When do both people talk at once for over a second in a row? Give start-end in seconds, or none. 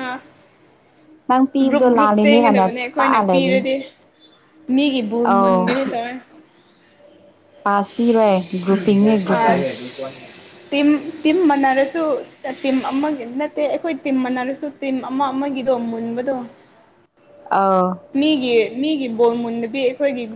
1.7-3.6